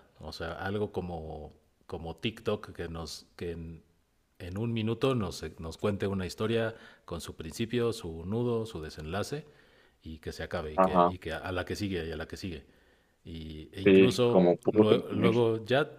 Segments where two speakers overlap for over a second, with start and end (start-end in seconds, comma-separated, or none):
13.8-15.3